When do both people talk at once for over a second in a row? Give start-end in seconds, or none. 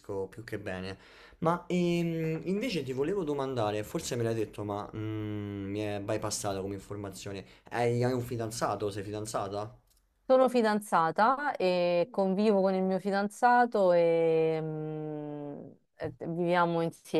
none